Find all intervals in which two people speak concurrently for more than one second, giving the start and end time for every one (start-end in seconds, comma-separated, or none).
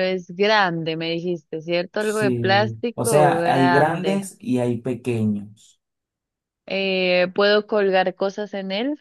2.0-4.2